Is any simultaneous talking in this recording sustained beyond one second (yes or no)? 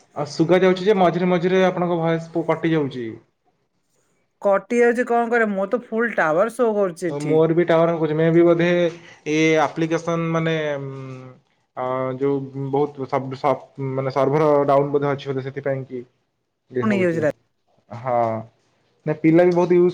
no